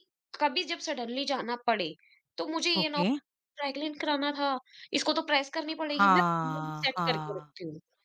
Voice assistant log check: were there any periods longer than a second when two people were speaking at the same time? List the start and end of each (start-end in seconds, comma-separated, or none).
5.9-7.5